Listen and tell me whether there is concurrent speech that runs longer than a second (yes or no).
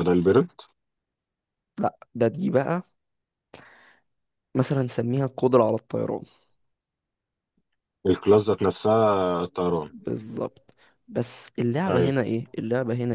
no